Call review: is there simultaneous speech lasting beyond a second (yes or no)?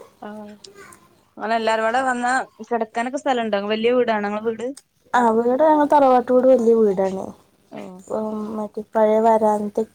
no